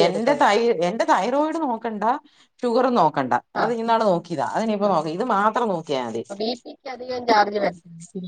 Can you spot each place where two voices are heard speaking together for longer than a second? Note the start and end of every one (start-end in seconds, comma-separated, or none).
none